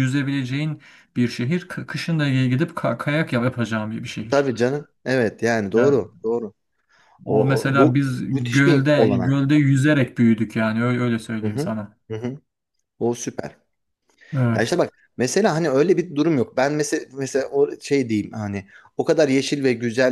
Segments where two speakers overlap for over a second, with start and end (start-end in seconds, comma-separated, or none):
7.3-9.4